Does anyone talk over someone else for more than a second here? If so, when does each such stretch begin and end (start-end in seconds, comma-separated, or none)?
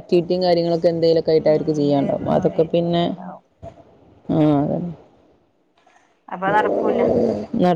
1.4-3.0